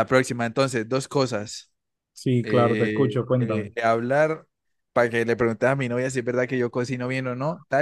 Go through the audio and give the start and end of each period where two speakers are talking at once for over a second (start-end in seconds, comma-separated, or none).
2.4-3.7